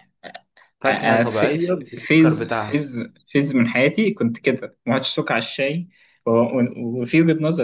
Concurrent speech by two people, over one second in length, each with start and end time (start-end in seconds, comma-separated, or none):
0.9-2.8